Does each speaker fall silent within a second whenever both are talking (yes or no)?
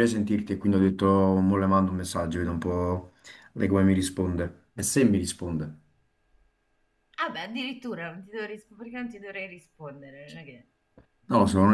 yes